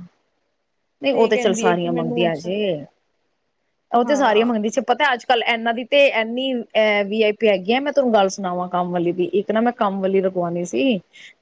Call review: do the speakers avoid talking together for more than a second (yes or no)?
no